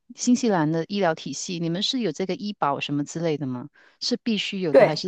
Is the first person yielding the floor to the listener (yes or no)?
no